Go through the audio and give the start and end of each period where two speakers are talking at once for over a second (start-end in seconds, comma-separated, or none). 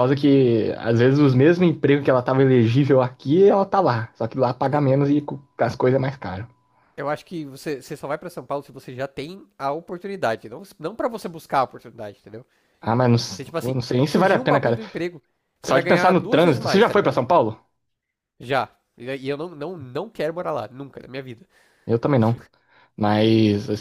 13.3-14.8, 15.7-17.2